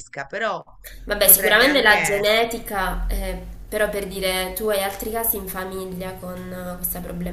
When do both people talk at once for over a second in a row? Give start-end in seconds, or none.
1.2-2.5